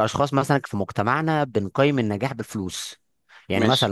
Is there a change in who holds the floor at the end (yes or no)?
no